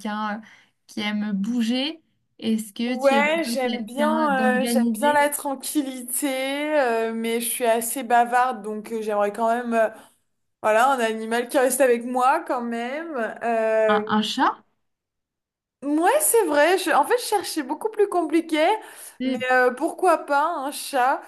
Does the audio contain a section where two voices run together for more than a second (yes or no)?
yes